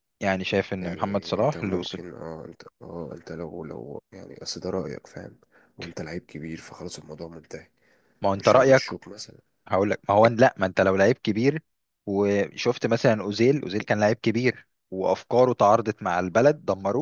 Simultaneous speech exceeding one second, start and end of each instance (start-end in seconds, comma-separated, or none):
0.8-2.0